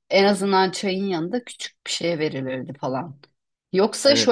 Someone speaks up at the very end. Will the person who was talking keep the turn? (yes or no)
yes